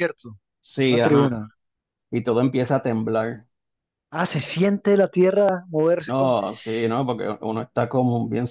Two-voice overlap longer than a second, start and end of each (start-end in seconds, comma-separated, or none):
none